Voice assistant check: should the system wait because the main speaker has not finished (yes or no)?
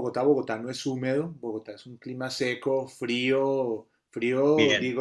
yes